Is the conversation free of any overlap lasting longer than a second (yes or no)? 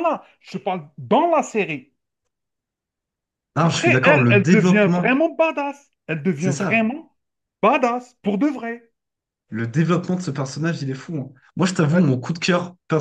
no